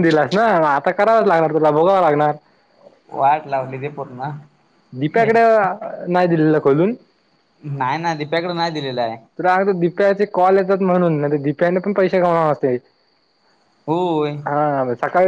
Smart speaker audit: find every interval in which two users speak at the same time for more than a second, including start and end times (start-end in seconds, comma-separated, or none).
none